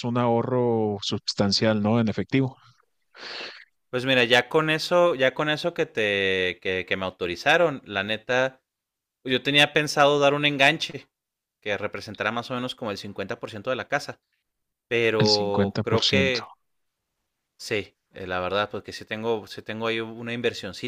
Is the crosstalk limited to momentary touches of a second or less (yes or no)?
no